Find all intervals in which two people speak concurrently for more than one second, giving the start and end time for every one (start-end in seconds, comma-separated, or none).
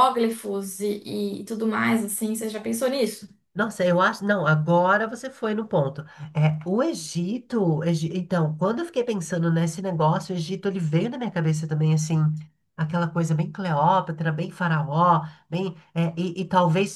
none